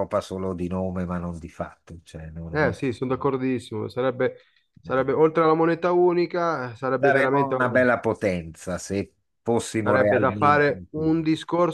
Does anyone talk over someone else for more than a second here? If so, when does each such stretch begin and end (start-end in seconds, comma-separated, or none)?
9.8-11.2